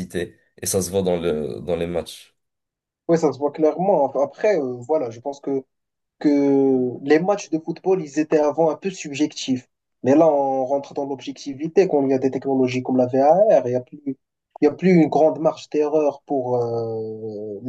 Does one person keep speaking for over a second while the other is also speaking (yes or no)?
no